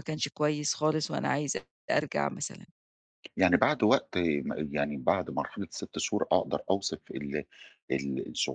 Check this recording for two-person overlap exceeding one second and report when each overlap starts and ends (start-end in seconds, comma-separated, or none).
none